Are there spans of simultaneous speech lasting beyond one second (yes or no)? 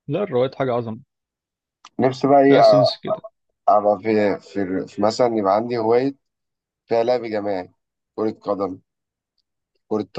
no